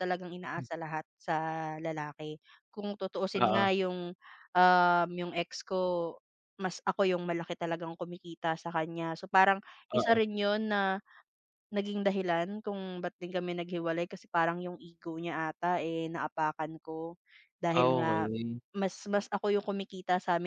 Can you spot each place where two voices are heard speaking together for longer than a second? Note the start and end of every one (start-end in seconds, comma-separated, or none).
none